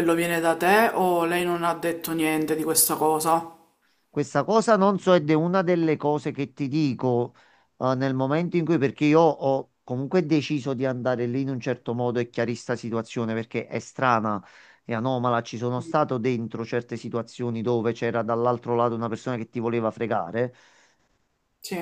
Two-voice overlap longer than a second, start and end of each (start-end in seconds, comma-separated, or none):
none